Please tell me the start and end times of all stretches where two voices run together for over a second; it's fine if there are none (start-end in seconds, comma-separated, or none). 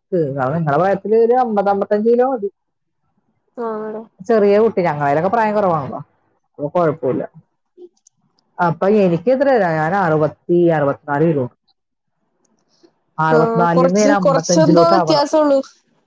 13.4-15.2